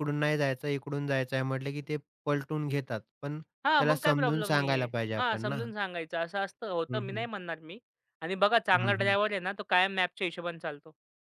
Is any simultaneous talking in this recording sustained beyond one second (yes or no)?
yes